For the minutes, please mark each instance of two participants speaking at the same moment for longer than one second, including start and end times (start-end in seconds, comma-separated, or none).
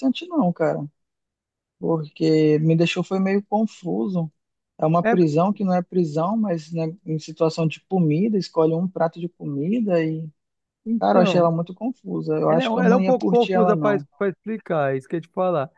12.5-14.1